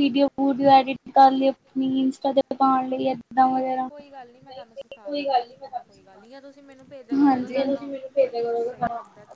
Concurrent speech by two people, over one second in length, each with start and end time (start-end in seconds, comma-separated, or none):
3.4-5.8